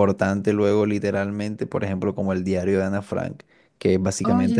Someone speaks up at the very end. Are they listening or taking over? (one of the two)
listening